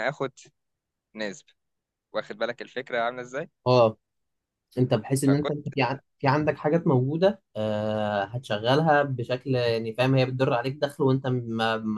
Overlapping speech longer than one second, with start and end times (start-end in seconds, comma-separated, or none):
none